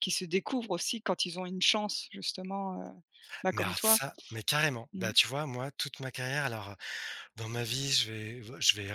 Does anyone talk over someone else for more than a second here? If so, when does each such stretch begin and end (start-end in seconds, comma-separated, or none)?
none